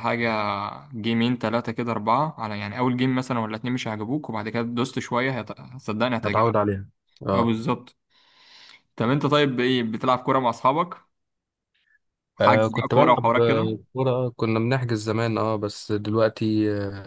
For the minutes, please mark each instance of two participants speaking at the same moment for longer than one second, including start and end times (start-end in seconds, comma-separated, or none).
12.4-13.7